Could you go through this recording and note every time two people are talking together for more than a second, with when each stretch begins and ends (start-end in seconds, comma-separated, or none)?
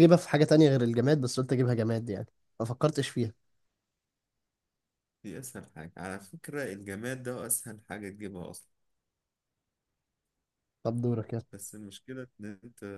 none